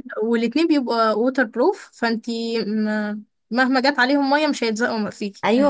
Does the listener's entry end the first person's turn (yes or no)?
yes